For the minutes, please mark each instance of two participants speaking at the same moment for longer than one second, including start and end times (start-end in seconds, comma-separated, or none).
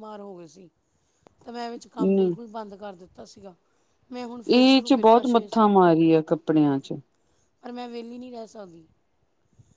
4.6-5.9